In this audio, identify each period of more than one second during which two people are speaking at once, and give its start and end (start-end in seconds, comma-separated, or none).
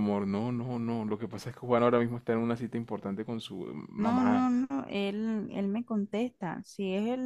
none